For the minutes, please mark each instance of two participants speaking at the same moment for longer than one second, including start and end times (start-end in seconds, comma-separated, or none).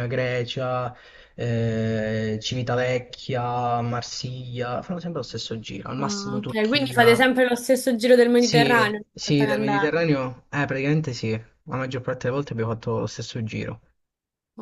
6.0-7.3, 8.3-10.1